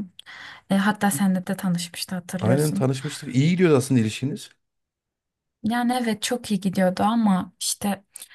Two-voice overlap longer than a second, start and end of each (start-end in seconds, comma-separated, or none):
none